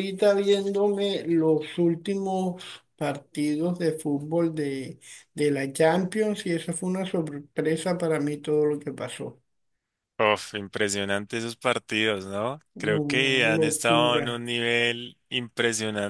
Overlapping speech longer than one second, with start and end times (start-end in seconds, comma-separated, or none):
12.7-14.4